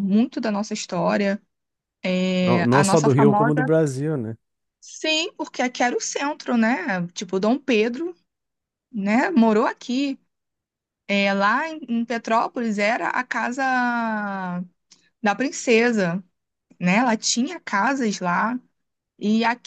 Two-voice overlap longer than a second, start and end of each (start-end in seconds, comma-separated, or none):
2.4-3.7